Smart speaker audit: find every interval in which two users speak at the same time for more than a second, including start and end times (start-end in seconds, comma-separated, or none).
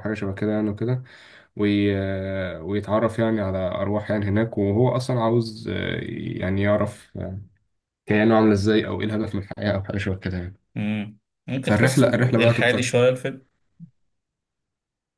11.6-12.9